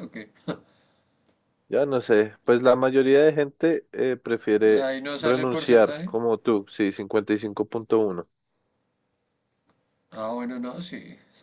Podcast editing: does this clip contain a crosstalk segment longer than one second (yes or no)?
yes